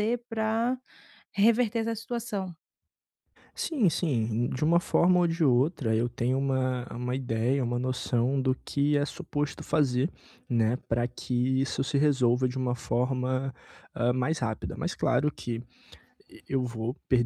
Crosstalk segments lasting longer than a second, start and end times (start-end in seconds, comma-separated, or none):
none